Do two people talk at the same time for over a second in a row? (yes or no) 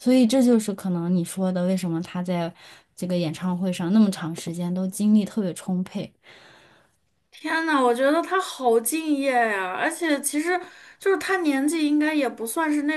no